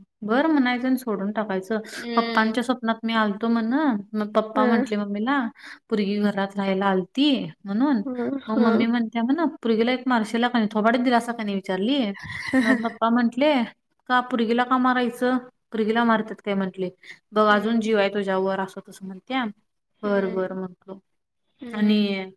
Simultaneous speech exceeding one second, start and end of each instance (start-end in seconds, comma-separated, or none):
none